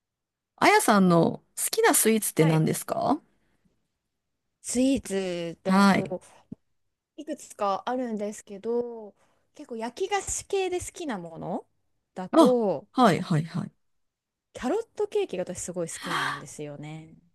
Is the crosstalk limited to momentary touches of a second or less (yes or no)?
yes